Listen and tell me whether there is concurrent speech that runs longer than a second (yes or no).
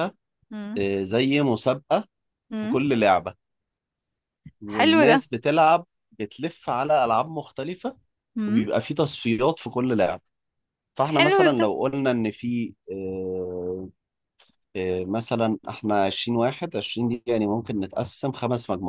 no